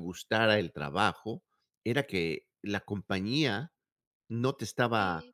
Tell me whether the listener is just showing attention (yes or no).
yes